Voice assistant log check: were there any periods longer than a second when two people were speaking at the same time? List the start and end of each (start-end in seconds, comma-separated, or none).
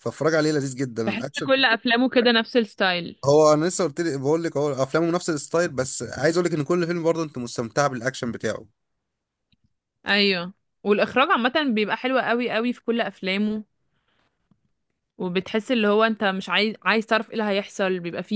none